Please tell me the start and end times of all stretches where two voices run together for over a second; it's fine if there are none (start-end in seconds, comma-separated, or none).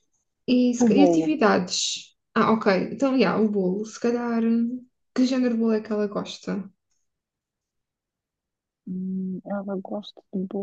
none